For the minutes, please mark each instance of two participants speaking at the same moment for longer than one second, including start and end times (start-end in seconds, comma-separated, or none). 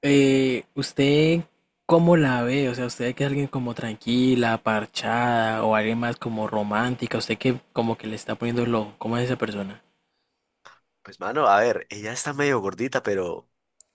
none